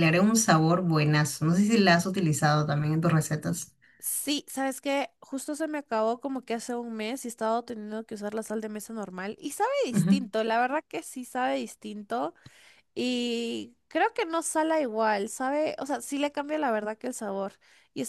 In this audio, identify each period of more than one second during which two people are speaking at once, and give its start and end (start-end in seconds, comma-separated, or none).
none